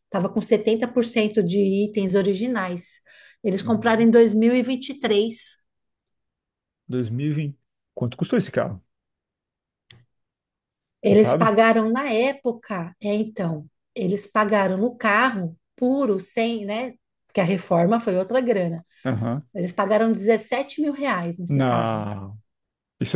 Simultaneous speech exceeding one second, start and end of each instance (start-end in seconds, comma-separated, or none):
none